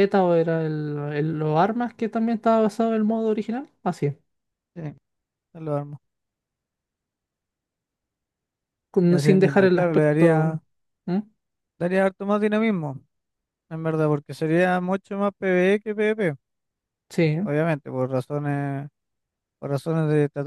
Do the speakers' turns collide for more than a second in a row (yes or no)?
yes